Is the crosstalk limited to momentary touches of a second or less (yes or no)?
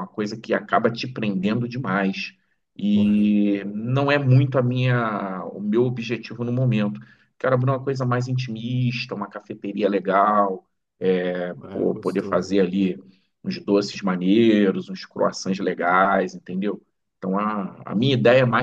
no